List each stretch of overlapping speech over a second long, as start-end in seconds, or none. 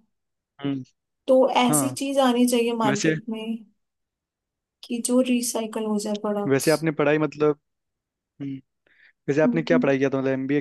none